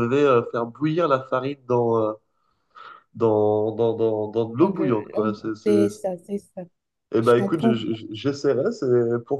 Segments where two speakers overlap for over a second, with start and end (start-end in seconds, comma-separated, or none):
4.6-6.1